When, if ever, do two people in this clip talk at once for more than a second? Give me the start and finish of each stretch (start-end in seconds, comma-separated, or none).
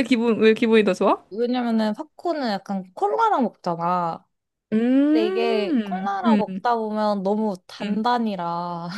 5.1-6.6